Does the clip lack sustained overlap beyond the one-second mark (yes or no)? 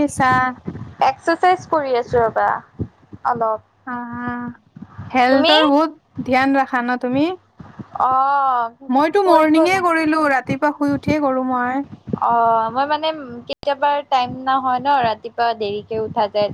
yes